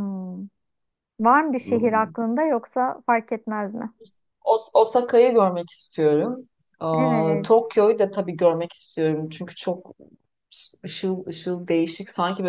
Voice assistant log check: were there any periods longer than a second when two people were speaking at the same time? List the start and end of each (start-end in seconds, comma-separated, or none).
none